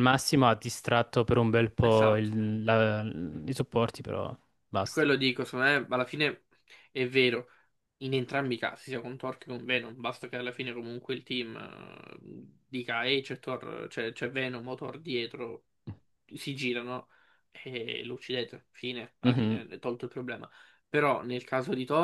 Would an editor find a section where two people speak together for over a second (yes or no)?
no